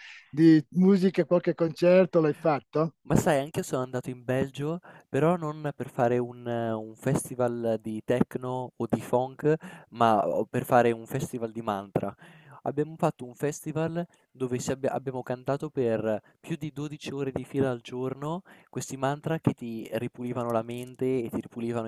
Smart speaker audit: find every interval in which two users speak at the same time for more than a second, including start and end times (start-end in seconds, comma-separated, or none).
none